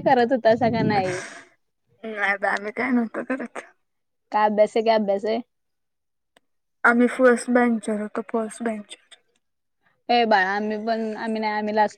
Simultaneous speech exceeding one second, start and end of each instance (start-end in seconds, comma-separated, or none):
none